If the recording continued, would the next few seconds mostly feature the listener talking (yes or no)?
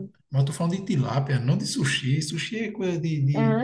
yes